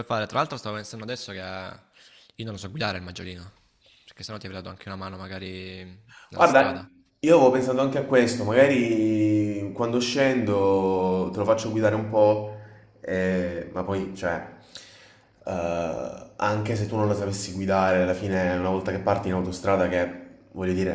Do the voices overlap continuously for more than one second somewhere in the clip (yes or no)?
no